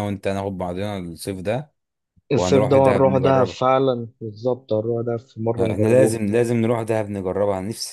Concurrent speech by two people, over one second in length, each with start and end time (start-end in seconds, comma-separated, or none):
2.3-3.6